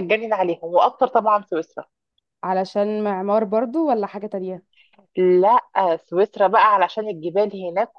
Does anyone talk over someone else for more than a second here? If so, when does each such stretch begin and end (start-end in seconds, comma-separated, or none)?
none